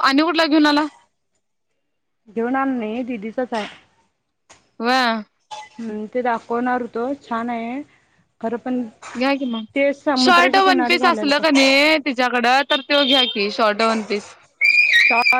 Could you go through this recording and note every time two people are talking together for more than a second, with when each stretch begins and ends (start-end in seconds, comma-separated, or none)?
10.2-11.7